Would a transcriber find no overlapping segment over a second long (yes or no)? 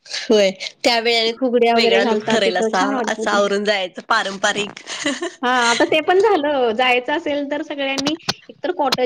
no